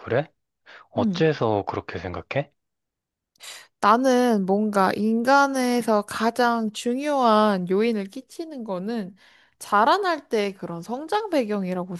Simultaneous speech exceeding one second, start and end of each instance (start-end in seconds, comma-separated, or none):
none